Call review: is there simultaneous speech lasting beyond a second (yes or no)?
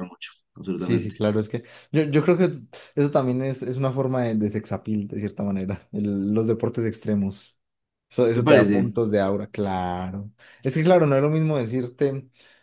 no